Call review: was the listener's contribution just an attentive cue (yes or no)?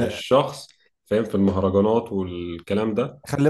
no